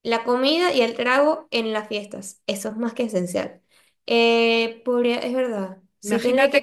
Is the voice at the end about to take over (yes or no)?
yes